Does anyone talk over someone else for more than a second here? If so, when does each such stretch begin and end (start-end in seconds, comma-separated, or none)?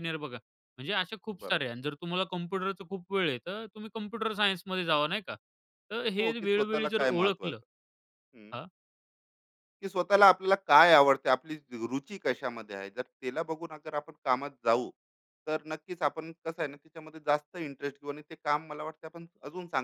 6.2-7.6